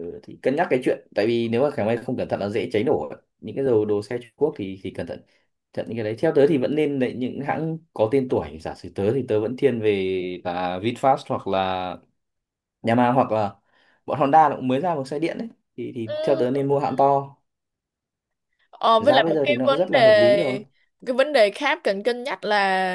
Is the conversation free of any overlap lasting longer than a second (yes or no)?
no